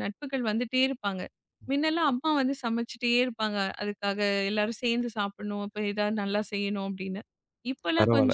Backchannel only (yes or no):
no